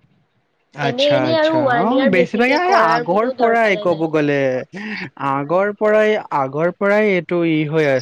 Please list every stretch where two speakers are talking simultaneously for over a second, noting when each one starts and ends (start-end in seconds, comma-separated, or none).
0.9-4.1